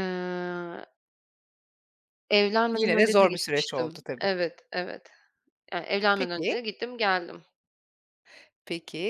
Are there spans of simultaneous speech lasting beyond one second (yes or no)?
yes